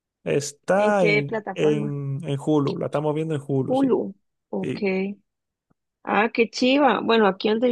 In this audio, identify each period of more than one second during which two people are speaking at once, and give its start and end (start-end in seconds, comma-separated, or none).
0.8-2.0